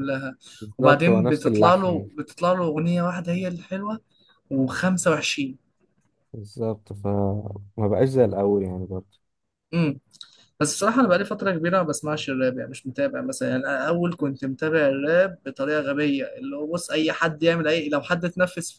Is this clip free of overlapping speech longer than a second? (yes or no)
no